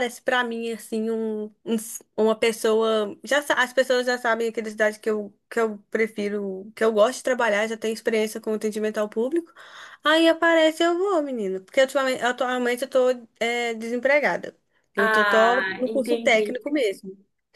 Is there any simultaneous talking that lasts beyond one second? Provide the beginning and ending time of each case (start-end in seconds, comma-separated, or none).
15.0-16.6